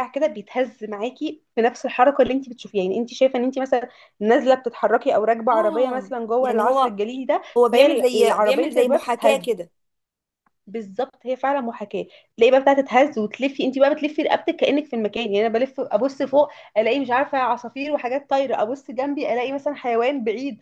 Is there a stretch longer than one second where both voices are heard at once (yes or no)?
yes